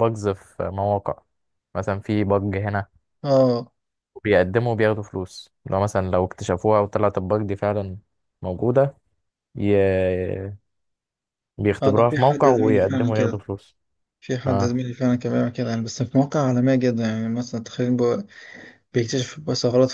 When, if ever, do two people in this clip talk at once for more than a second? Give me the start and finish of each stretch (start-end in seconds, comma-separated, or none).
11.8-13.4